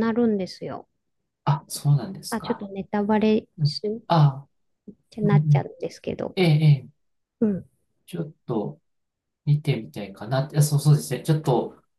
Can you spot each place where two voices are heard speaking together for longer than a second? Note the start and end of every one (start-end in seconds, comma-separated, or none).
none